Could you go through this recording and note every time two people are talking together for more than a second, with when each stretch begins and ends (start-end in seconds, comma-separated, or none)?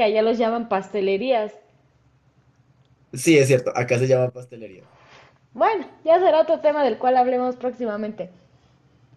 none